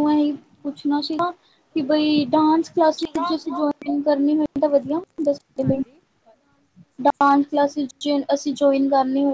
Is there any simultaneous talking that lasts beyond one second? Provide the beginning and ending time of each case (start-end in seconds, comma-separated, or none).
none